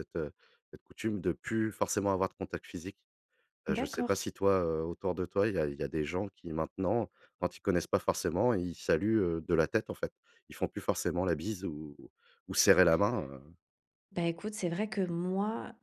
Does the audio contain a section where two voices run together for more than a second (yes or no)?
no